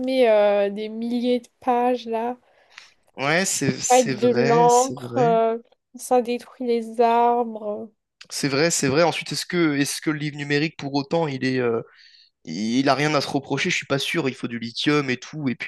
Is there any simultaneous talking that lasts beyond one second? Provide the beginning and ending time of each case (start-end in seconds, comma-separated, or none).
3.9-5.4